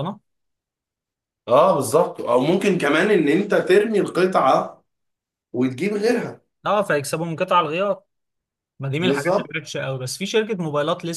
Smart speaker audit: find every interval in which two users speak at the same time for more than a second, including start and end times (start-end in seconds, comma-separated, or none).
none